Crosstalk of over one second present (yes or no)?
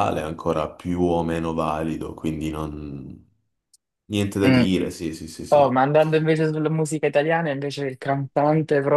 no